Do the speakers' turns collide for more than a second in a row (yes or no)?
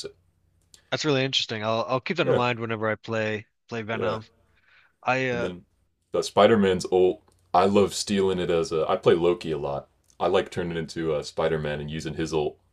no